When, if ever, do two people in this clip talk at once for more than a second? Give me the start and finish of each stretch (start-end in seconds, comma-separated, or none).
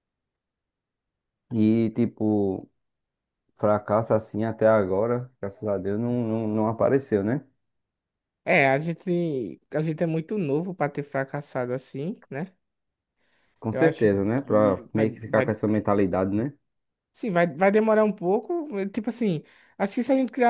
13.7-15.6